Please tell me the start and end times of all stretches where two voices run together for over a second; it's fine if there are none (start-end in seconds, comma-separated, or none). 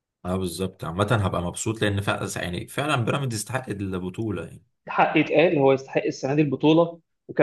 none